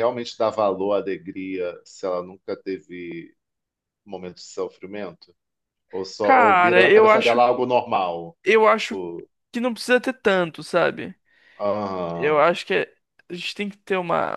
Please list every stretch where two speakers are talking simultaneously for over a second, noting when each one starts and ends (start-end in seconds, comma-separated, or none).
6.2-7.4